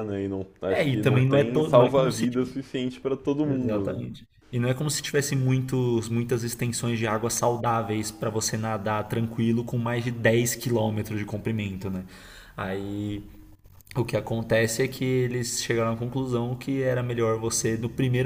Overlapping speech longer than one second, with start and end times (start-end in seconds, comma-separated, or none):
0.7-2.3